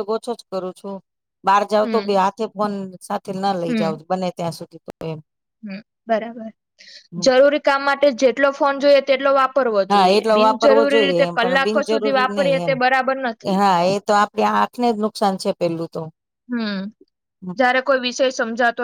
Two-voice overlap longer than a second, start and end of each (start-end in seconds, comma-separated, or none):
11.4-12.6